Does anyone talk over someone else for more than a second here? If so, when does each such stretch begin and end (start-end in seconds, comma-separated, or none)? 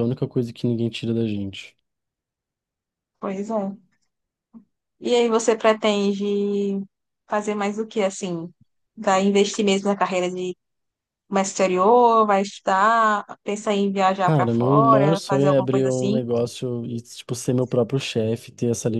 14.2-16.2